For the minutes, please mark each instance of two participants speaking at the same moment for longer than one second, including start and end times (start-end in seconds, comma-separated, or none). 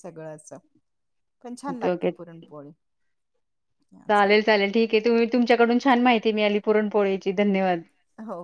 none